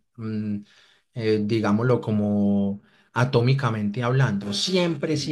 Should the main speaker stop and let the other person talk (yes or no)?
no